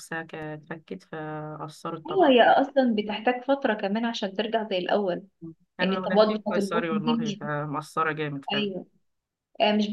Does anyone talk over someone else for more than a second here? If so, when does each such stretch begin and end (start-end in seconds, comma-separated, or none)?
5.8-7.5